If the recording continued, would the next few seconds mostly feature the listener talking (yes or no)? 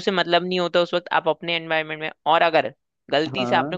no